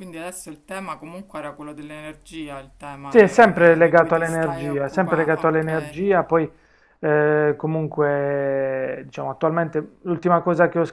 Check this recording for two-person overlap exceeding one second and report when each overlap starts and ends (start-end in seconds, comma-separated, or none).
3.1-6.0